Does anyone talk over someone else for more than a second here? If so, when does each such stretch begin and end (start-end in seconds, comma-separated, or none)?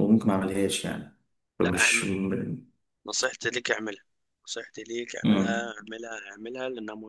none